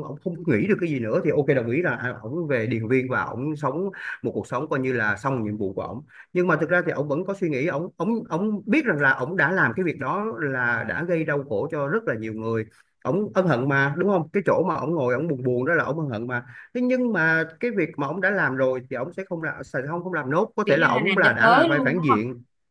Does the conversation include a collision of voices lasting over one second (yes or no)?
yes